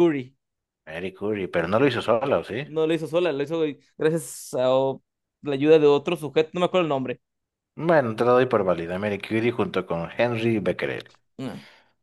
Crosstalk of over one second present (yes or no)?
no